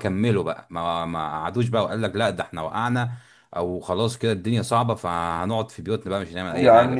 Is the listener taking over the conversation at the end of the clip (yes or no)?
yes